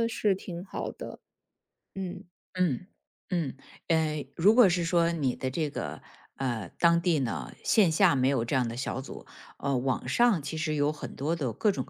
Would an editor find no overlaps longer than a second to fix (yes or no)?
yes